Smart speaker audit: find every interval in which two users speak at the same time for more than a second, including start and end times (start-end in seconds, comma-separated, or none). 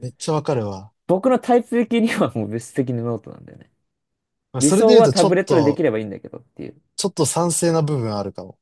4.6-5.8